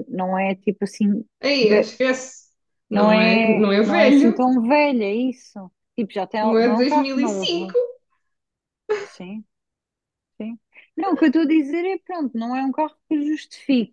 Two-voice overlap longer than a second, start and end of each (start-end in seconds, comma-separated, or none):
2.9-4.4, 6.4-7.7